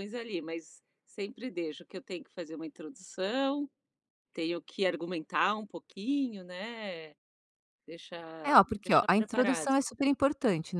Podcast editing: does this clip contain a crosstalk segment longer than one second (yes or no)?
yes